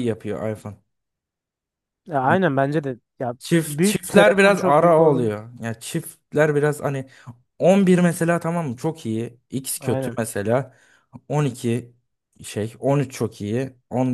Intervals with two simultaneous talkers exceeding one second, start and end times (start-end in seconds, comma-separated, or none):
3.4-5.3